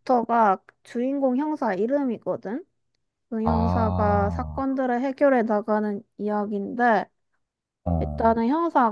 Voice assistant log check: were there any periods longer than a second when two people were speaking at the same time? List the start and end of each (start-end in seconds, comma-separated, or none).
3.4-4.7